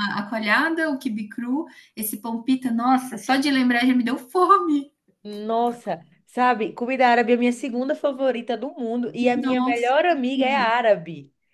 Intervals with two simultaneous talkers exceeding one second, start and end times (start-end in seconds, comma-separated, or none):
9.4-10.7